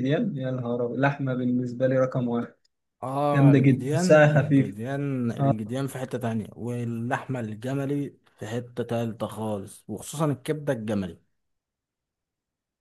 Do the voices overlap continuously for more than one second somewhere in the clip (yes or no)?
yes